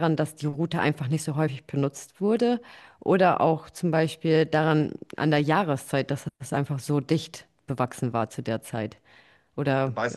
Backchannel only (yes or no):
no